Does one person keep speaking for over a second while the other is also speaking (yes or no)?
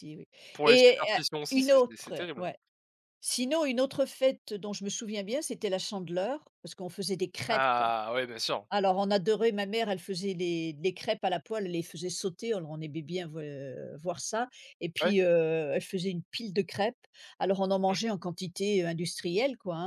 yes